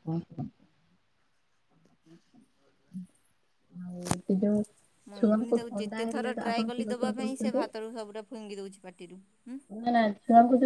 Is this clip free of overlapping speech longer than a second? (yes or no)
no